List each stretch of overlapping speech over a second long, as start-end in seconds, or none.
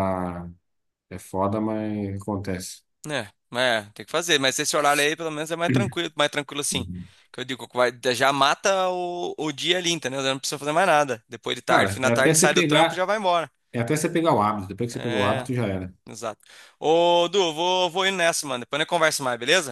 11.7-13.1